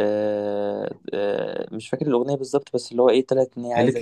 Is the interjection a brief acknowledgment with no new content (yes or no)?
no